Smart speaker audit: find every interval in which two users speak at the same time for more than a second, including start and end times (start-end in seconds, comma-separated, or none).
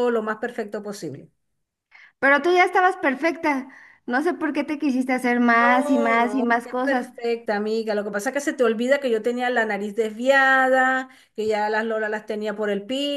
5.6-7.1